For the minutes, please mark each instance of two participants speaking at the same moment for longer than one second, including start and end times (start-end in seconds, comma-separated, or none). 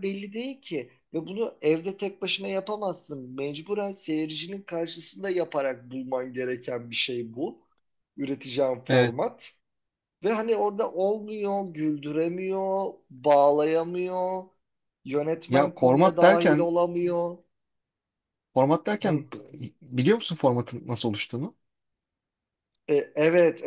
15.5-16.7